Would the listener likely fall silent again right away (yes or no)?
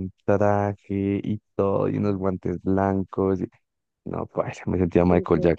no